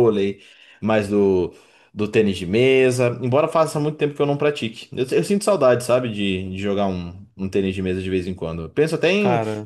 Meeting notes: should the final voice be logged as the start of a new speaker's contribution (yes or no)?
no